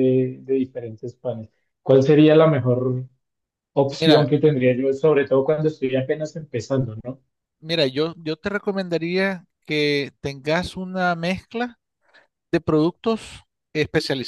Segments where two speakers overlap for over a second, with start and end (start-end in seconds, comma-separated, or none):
none